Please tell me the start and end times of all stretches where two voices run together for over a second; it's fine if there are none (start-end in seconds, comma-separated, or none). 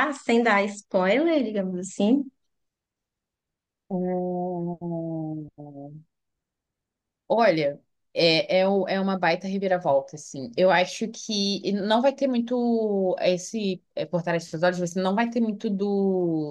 none